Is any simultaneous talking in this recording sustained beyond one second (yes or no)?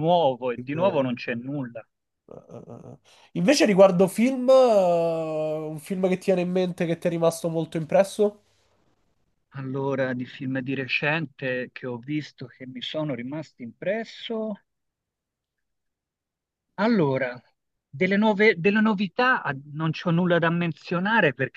no